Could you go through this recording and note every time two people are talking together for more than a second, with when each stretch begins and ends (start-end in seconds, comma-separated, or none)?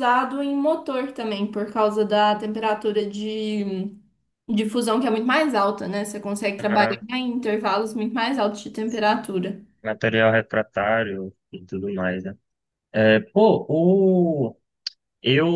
none